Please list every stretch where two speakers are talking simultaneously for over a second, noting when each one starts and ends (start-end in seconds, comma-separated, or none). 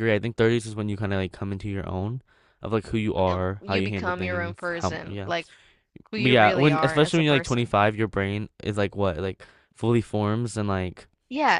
3.2-5.3, 6.2-7.8